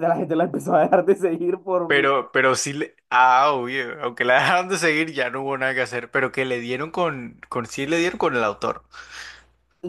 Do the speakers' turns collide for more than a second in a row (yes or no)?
no